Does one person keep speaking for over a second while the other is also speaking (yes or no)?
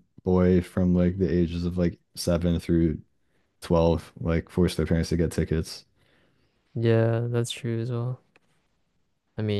no